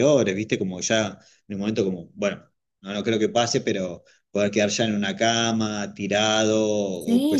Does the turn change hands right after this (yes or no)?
yes